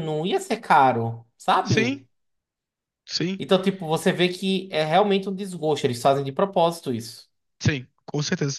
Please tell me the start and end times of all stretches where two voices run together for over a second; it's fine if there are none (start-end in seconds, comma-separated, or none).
none